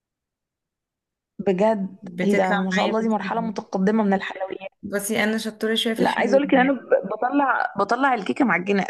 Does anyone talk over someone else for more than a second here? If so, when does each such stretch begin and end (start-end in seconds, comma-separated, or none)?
2.0-3.6